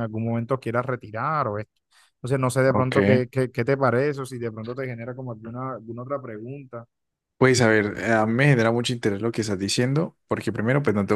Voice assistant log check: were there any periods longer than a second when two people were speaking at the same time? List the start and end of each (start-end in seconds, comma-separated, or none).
none